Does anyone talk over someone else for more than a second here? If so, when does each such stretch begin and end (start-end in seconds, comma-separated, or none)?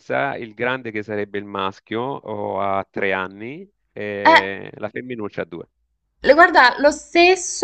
none